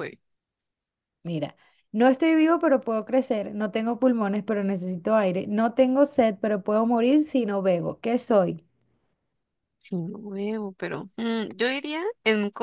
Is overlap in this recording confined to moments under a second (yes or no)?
yes